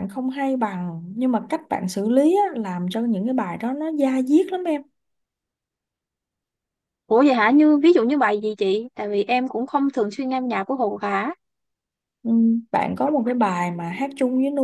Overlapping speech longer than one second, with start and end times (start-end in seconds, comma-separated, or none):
none